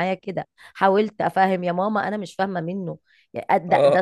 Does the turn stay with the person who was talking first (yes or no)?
yes